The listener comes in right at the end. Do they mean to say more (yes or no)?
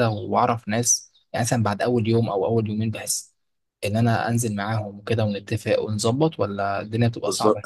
yes